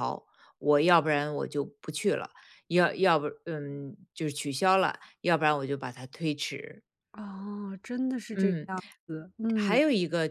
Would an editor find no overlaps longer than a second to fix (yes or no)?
yes